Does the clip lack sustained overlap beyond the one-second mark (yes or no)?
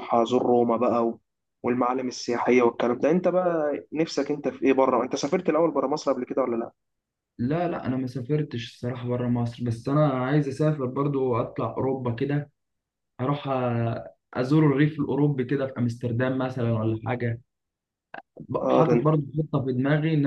yes